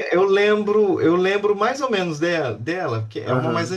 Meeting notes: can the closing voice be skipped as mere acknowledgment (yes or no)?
no